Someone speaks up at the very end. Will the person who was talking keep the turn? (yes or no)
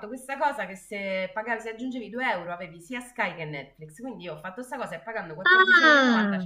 yes